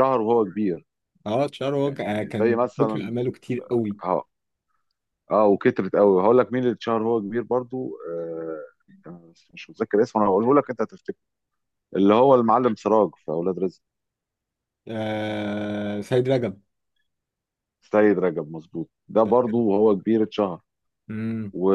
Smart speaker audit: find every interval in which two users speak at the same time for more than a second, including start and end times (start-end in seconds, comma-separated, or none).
1.8-3.1